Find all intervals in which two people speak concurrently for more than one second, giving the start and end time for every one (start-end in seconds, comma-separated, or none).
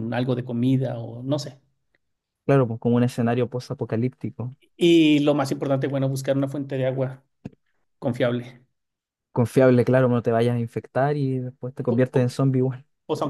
none